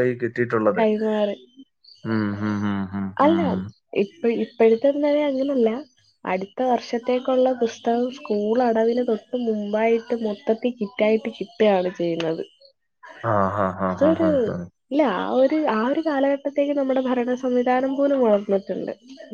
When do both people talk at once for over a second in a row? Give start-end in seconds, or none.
none